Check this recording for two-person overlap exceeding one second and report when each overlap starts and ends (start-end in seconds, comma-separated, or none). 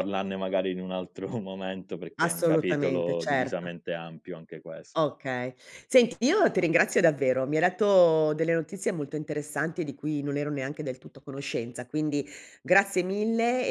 2.2-3.7